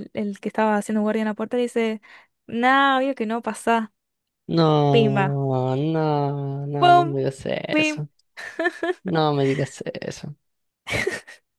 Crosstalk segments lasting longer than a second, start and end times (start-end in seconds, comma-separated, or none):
none